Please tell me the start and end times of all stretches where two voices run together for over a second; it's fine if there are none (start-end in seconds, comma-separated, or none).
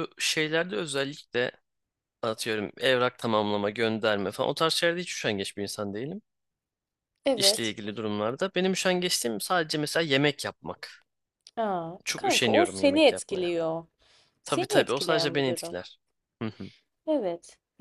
12.0-13.5, 14.4-15.8